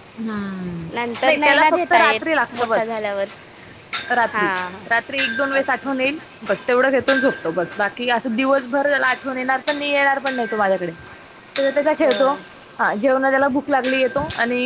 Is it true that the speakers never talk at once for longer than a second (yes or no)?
no